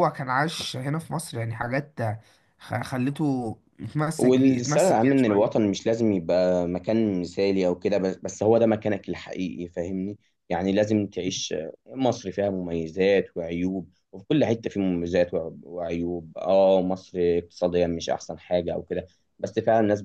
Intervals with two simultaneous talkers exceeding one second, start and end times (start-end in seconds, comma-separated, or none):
4.2-5.7